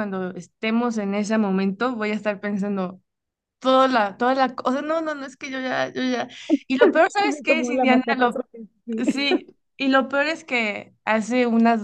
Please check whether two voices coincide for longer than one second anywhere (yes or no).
yes